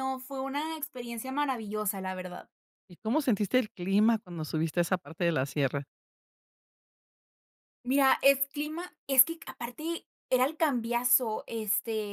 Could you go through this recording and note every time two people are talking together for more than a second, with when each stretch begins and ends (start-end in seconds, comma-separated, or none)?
none